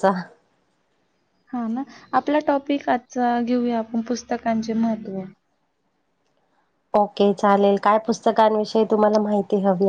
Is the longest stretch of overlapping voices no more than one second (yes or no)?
yes